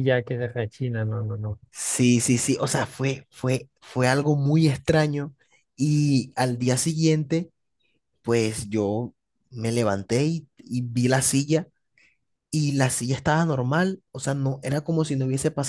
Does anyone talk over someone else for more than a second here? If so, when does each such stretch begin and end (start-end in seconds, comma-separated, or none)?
none